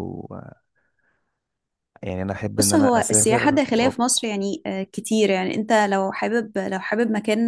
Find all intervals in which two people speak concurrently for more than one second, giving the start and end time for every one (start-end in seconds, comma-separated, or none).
2.6-3.9